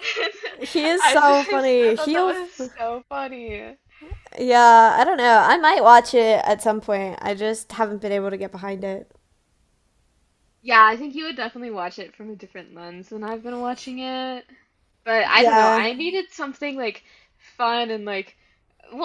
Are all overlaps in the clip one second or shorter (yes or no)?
no